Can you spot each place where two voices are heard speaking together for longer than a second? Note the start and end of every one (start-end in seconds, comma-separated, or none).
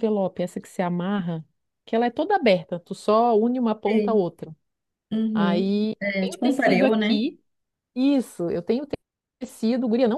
5.3-7.2